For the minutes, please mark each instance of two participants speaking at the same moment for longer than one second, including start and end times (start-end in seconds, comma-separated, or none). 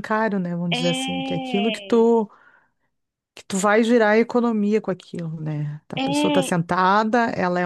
0.7-2.1